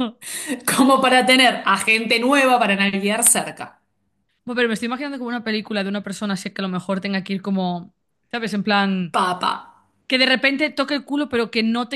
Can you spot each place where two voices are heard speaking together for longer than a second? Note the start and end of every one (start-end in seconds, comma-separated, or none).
none